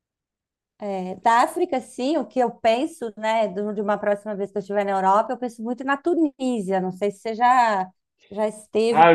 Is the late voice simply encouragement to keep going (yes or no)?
no